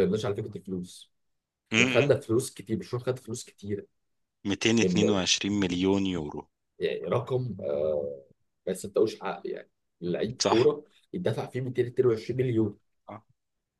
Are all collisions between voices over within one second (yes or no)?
yes